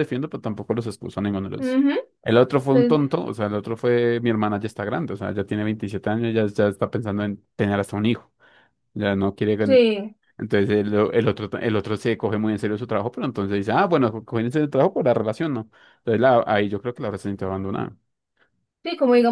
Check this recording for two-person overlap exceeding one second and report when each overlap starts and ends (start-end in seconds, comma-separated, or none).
none